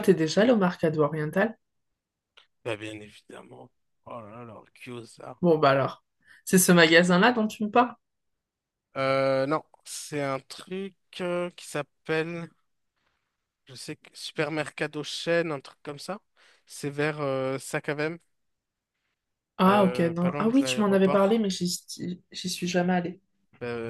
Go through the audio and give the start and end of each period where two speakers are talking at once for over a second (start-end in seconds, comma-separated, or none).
19.7-21.4